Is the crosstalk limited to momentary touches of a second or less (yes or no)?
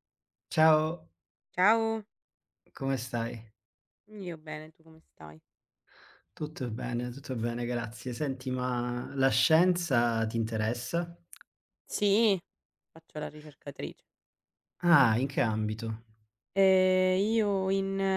yes